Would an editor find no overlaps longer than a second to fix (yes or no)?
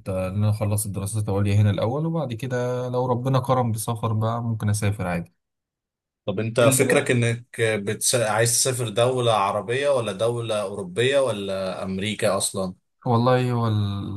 yes